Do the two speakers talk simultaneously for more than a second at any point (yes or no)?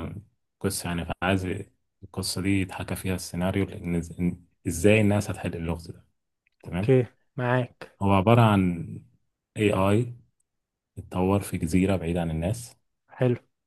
no